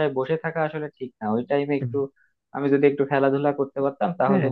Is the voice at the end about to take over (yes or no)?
no